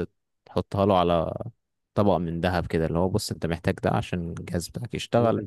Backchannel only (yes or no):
no